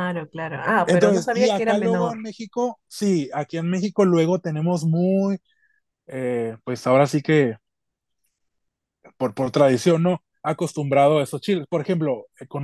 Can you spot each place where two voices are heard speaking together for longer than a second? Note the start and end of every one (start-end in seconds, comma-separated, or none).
0.8-2.2